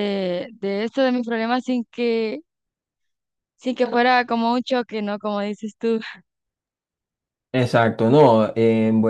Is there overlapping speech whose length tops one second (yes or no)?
no